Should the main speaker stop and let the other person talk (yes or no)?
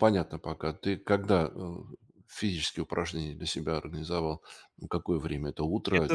yes